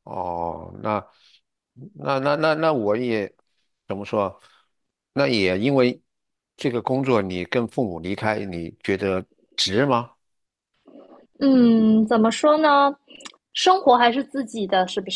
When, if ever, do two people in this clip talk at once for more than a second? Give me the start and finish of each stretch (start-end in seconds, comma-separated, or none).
none